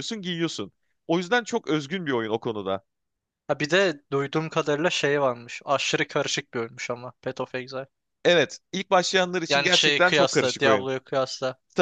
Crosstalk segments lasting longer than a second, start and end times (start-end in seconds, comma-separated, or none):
9.5-10.9